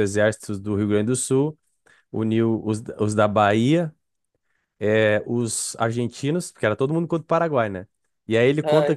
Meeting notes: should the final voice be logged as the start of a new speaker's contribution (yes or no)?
no